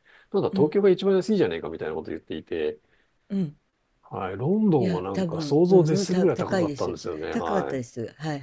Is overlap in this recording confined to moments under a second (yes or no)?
no